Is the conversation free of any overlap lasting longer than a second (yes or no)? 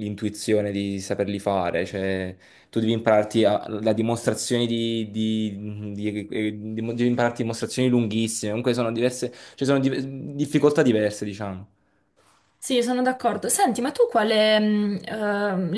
yes